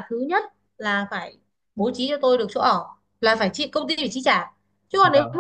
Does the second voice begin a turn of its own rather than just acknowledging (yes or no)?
no